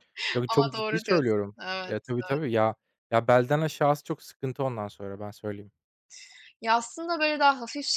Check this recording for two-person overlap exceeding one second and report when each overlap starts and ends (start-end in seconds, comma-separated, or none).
0.5-2.1